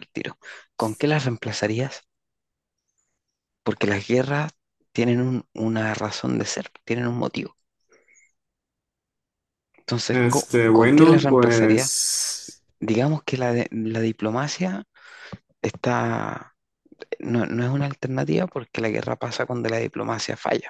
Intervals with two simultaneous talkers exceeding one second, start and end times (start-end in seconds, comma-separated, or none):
10.1-11.9